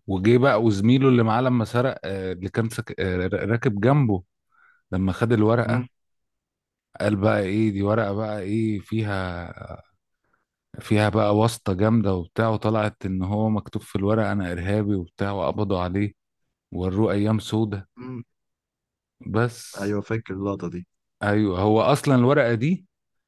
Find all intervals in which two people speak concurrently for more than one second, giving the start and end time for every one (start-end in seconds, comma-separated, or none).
none